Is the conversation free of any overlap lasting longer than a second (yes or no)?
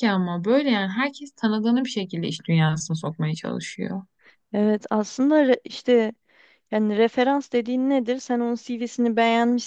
yes